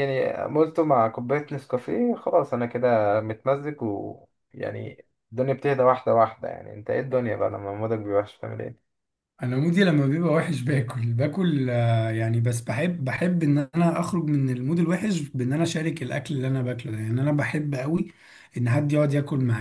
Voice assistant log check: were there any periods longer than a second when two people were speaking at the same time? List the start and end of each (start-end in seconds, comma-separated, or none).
none